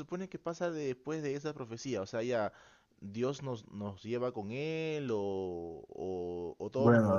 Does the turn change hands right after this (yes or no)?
yes